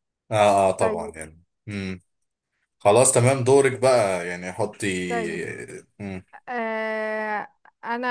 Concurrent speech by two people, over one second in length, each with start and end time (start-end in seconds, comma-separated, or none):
none